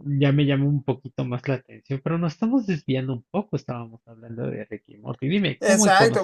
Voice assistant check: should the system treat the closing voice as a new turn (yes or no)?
yes